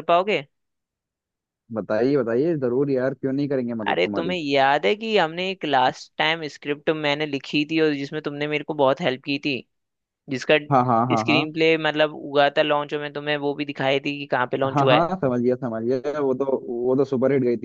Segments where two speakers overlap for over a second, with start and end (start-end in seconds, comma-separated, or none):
none